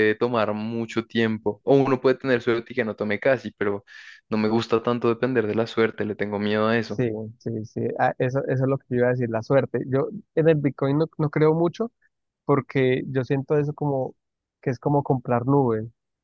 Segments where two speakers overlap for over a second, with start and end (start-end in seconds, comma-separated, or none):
none